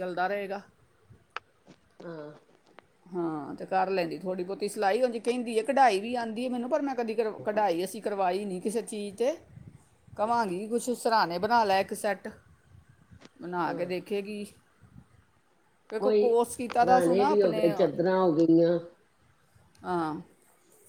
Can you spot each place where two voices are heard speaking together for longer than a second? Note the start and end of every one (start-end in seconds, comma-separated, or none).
none